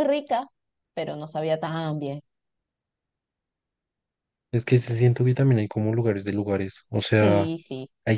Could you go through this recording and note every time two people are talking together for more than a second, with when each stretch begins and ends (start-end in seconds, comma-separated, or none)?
none